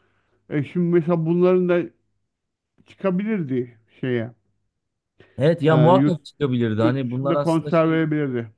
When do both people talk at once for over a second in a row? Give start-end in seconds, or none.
6.8-8.0